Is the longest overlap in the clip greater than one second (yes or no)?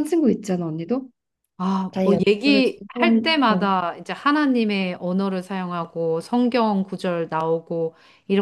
yes